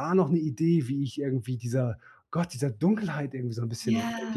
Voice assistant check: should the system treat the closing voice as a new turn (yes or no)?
yes